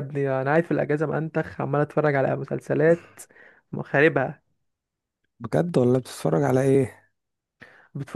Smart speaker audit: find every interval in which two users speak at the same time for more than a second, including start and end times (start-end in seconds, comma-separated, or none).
none